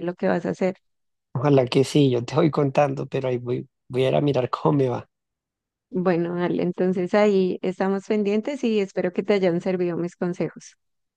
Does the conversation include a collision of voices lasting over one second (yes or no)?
no